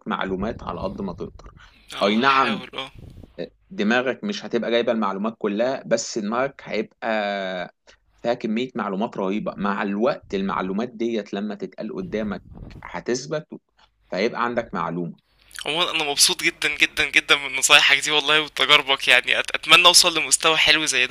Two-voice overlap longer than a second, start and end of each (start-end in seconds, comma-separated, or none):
none